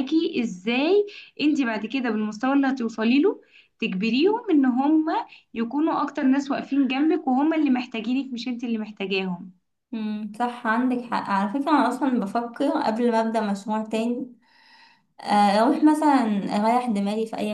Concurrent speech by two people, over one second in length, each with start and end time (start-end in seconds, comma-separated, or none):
none